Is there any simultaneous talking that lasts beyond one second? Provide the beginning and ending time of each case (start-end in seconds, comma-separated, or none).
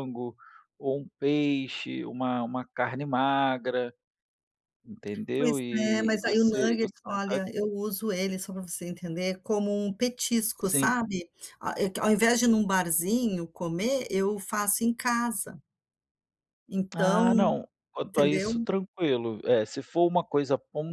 5.4-7.4